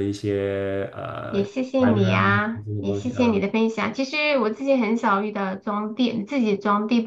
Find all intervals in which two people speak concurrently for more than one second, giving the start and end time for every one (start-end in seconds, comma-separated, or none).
1.3-3.4